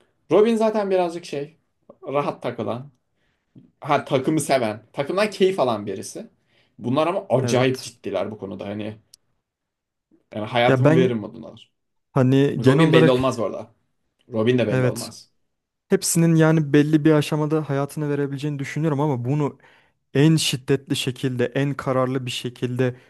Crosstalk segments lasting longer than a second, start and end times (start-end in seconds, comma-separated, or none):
none